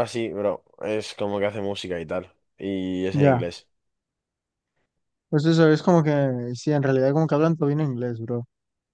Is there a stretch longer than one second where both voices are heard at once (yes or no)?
no